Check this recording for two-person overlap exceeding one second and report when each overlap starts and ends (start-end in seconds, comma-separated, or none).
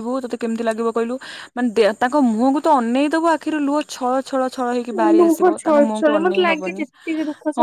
5.0-6.9